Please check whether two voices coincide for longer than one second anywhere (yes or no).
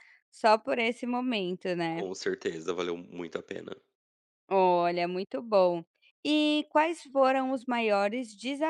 no